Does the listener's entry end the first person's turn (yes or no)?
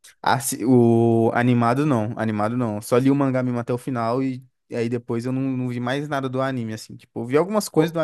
no